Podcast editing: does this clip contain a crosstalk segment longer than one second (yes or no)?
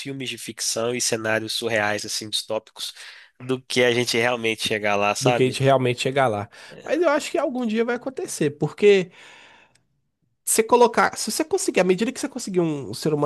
no